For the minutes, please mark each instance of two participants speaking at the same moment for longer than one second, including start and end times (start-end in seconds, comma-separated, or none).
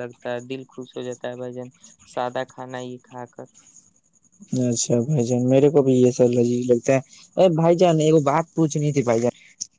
none